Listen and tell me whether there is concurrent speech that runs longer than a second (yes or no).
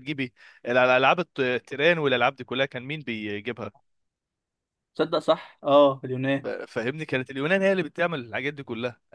no